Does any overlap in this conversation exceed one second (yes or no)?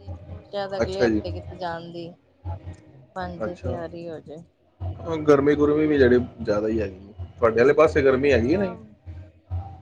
no